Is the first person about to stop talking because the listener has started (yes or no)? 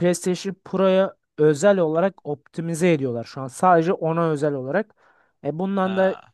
no